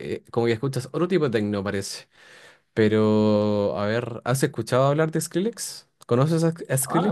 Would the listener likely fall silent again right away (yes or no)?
no